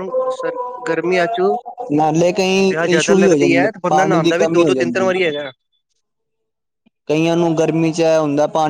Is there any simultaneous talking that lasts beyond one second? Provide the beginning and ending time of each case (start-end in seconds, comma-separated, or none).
2.7-5.1